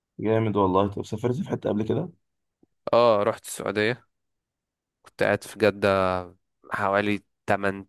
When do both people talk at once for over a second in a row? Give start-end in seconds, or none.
none